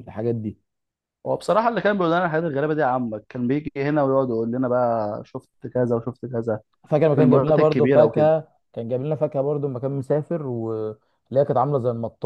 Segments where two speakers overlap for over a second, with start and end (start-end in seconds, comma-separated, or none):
7.2-8.4